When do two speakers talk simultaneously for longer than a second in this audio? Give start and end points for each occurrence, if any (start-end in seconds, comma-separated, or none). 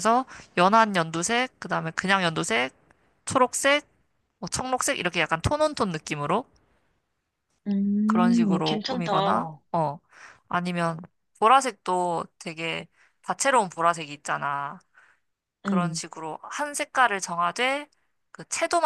8.1-9.6